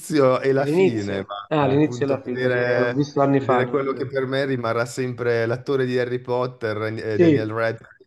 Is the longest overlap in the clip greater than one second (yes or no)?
yes